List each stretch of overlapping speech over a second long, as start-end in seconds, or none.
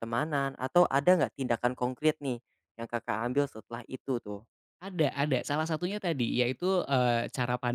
none